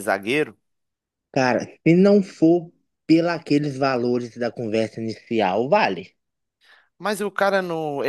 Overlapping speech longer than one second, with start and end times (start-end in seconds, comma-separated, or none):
none